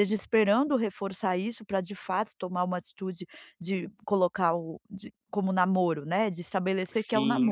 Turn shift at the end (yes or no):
yes